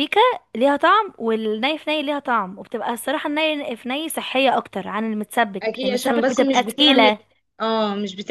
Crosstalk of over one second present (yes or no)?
yes